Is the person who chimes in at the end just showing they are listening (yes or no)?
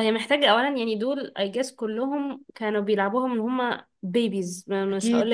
yes